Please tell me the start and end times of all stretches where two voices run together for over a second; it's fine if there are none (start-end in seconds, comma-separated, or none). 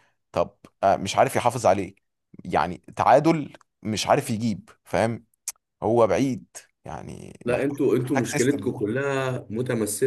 7.5-8.7